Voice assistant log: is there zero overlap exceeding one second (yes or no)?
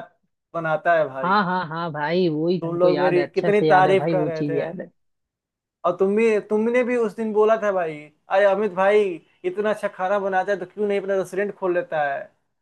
no